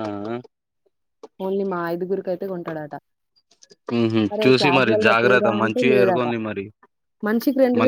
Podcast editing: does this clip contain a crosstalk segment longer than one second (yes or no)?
yes